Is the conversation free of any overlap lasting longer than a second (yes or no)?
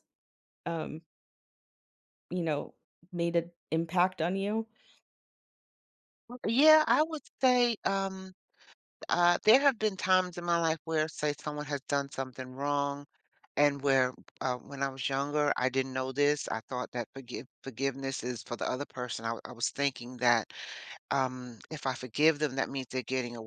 yes